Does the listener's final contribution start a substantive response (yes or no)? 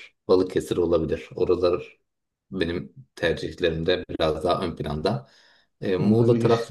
no